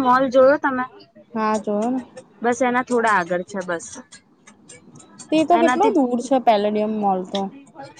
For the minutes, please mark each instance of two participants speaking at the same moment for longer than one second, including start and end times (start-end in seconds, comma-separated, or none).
none